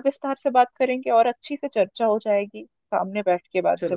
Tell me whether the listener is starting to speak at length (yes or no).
yes